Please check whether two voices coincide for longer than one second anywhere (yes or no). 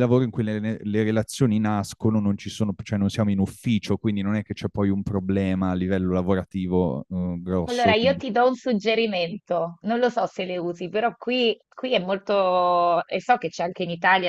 no